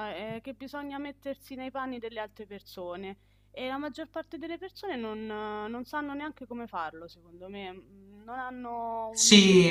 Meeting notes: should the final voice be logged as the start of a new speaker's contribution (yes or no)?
yes